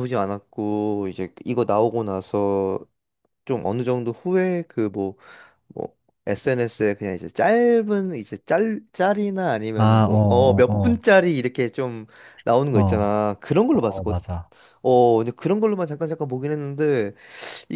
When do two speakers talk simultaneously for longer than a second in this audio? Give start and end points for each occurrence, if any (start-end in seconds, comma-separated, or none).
9.7-11.0